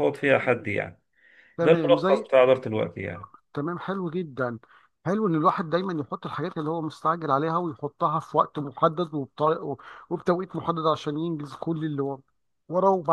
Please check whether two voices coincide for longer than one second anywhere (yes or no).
no